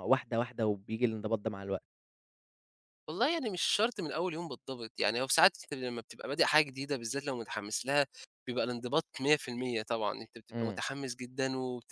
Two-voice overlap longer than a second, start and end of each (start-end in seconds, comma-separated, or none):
none